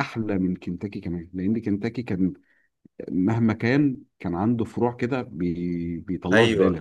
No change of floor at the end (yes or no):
no